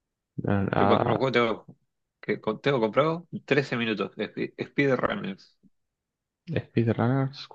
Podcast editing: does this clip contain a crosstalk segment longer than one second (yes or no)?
no